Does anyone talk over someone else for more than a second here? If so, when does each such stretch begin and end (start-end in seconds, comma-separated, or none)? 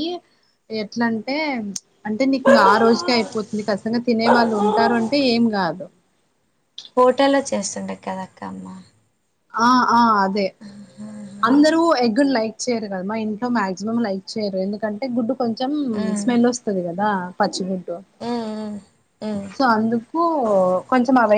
none